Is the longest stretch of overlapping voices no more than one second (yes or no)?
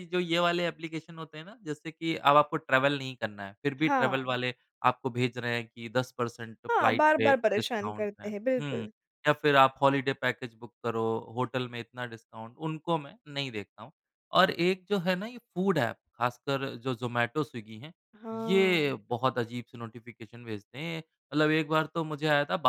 no